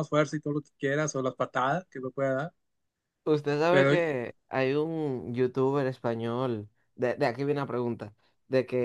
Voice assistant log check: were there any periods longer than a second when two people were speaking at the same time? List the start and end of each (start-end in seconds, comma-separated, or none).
none